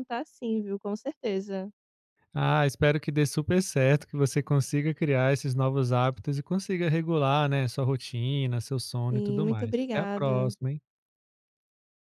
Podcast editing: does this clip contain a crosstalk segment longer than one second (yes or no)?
yes